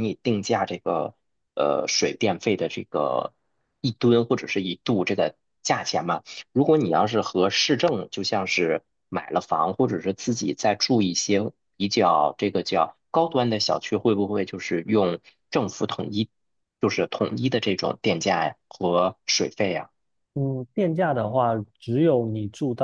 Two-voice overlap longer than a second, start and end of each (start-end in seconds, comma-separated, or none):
none